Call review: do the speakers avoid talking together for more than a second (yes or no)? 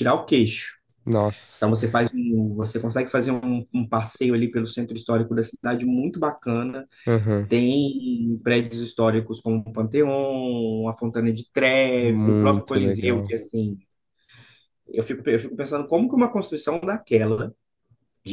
no